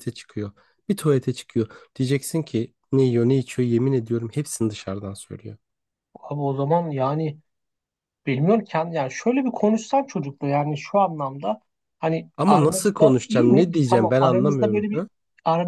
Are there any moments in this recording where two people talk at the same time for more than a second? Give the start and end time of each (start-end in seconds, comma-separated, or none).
12.4-14.9